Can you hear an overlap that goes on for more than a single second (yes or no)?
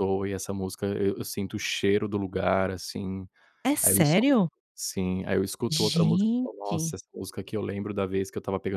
yes